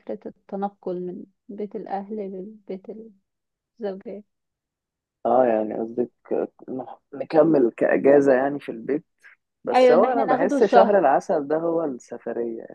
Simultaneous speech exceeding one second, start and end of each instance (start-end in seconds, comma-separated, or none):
9.7-11.0